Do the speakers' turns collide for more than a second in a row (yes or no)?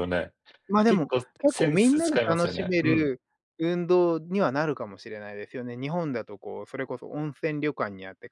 yes